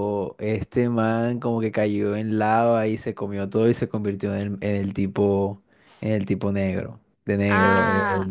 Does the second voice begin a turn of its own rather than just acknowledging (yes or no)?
yes